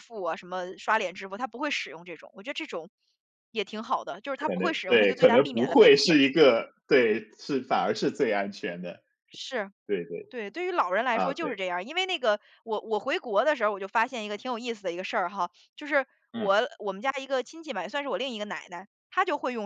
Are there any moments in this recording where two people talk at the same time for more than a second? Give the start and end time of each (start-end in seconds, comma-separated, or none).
4.3-6.2